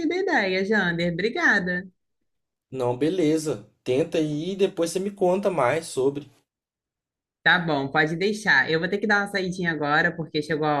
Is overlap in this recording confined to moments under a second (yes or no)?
yes